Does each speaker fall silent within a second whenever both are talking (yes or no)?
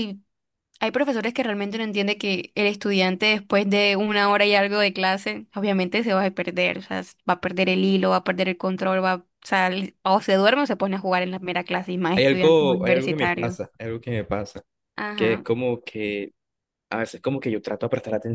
no